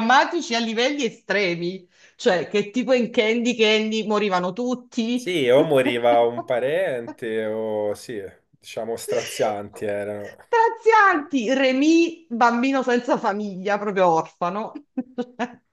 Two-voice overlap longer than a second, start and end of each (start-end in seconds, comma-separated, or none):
none